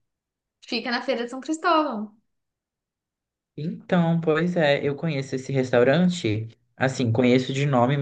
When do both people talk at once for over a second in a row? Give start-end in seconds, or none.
none